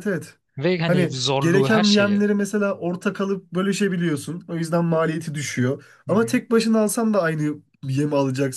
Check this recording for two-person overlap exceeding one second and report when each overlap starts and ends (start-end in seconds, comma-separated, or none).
0.9-2.2